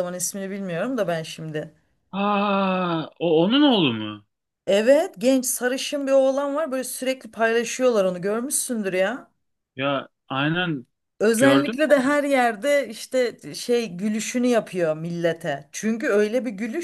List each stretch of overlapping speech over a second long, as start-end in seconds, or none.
none